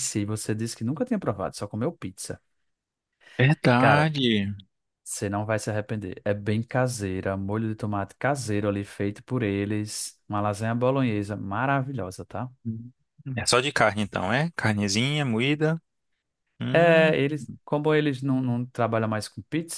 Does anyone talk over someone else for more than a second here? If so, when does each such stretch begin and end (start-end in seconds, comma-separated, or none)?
none